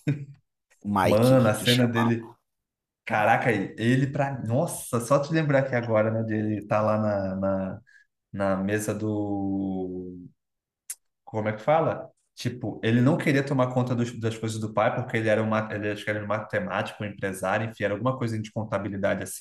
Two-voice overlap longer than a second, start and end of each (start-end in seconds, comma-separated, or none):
1.0-2.3